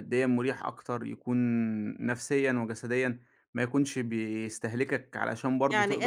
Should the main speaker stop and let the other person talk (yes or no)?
yes